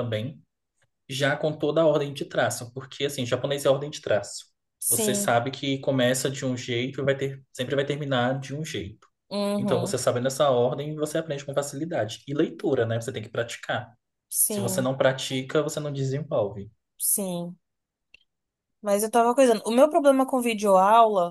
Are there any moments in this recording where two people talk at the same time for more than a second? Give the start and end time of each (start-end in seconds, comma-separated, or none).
none